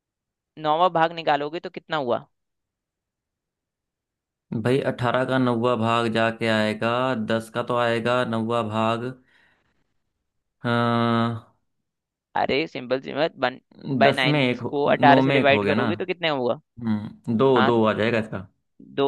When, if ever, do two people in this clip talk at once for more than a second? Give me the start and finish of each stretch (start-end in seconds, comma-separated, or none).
14.0-15.9